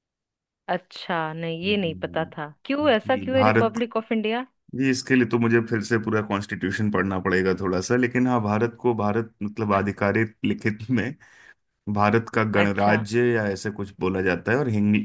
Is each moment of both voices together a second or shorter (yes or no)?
no